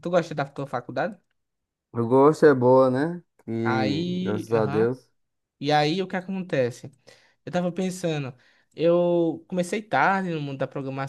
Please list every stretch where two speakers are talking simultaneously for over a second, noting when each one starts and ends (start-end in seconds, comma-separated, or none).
3.6-4.9